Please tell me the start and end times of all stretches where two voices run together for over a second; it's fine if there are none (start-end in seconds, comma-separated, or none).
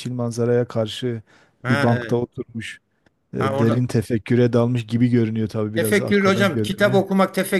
5.7-7.0